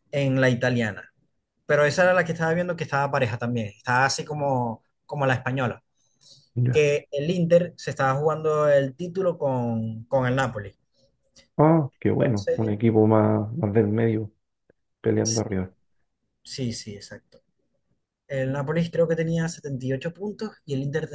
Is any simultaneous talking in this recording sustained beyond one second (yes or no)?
no